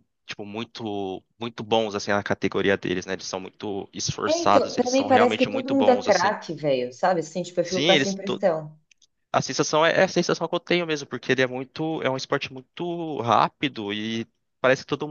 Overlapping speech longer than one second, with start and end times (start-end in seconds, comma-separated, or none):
4.3-6.3